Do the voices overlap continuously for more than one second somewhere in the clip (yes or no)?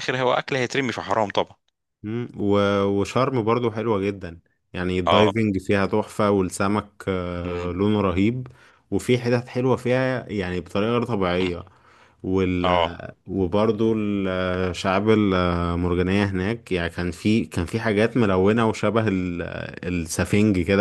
no